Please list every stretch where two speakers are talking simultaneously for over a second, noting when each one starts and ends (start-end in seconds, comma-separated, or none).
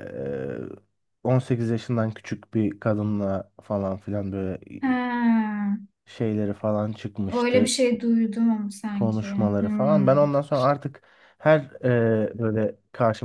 8.9-10.3